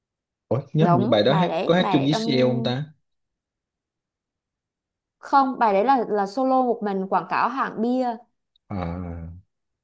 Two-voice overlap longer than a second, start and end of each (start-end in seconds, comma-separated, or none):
0.8-2.2